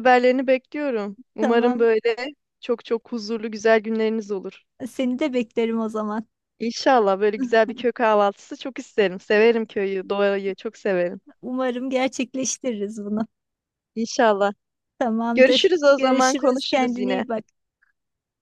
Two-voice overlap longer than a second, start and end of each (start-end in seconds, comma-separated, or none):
15.3-17.2